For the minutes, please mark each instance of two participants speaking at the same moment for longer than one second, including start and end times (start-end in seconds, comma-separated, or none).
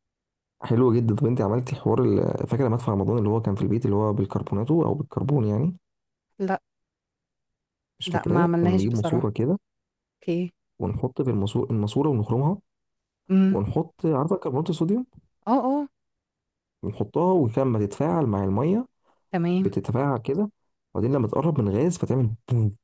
8.1-9.3